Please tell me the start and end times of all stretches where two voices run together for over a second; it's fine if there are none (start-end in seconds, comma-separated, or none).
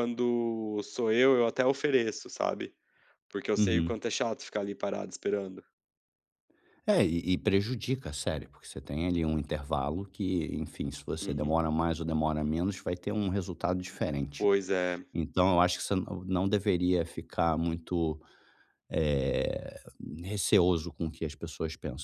none